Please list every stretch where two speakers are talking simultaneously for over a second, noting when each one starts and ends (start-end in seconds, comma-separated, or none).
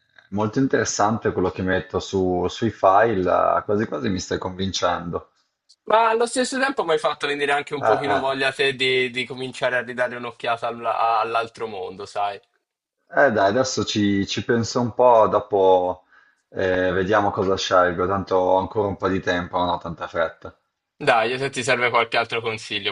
none